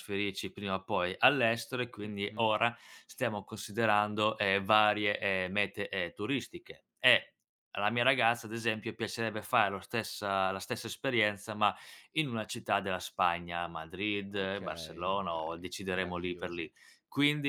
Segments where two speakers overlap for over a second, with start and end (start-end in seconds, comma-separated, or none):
14.3-16.7